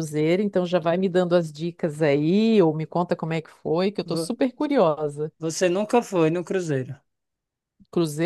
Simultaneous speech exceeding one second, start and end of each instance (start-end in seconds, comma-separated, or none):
none